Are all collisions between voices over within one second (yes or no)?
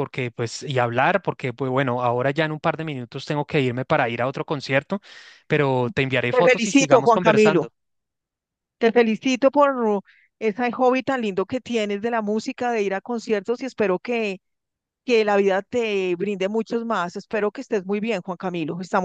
no